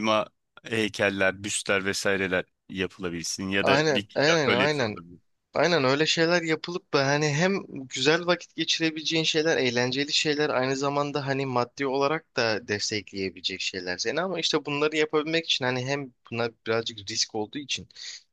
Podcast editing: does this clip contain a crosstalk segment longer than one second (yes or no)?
yes